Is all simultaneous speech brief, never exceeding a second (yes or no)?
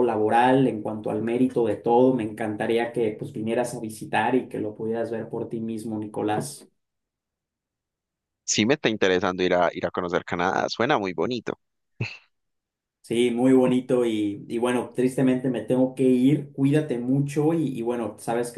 yes